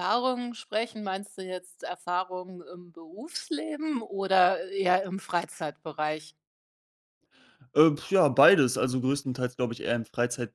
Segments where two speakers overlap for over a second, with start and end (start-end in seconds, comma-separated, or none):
none